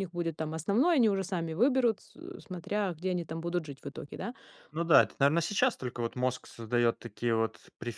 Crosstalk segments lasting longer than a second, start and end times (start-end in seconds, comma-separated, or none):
none